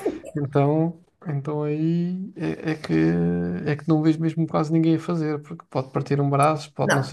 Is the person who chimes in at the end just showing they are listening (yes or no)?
no